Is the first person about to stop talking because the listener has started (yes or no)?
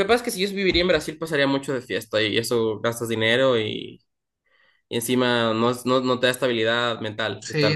yes